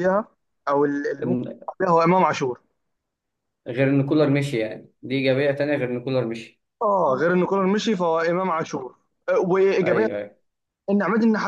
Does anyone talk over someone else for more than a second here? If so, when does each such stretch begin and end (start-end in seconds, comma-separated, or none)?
none